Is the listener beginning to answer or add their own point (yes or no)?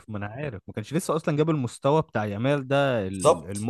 no